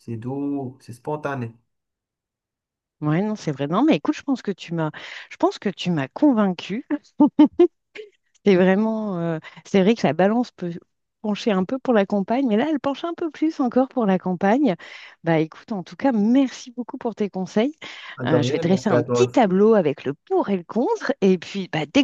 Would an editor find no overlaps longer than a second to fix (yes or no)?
no